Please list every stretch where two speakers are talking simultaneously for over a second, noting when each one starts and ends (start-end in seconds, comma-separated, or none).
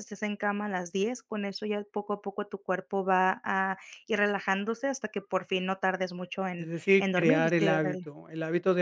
6.6-8.1